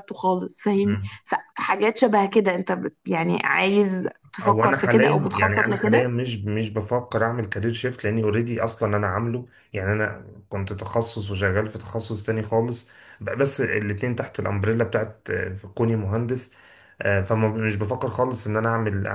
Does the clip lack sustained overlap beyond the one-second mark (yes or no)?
no